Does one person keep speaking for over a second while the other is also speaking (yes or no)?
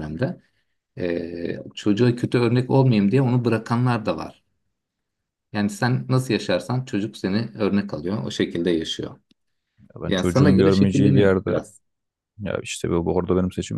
yes